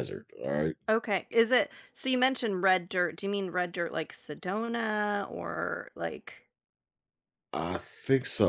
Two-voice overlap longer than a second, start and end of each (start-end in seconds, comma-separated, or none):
none